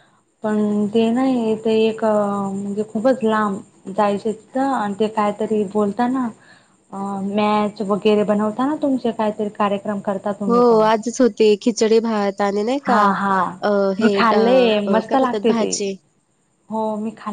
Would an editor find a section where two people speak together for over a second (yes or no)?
yes